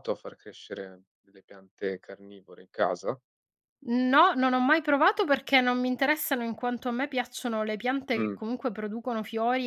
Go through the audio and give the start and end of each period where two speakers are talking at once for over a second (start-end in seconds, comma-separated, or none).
none